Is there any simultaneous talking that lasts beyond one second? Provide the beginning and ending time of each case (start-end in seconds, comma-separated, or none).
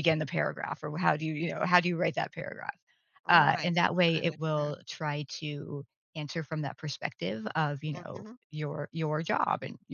3.3-4.7